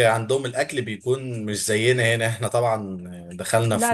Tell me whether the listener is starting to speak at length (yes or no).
no